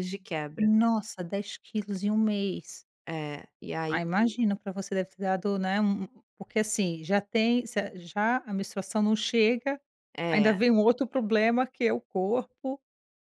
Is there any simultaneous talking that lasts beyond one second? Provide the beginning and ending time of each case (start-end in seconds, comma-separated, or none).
none